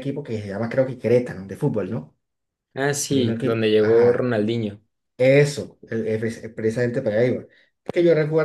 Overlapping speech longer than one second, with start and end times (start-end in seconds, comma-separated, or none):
3.1-4.3